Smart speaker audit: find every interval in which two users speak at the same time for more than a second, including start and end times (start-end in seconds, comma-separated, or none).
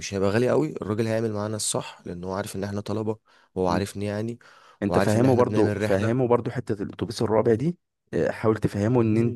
4.9-6.3